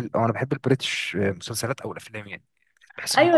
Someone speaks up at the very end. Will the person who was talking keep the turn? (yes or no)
no